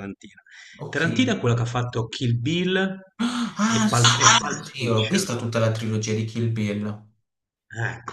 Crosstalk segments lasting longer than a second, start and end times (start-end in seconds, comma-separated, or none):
3.7-5.3